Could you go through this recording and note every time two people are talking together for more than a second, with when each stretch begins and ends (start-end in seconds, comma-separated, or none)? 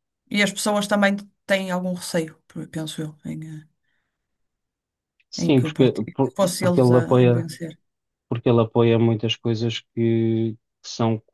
5.4-7.5